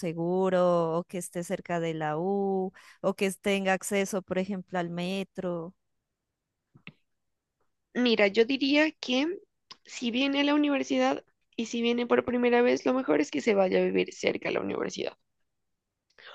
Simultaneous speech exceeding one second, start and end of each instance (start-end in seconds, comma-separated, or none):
none